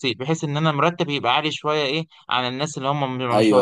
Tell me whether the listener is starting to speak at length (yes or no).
yes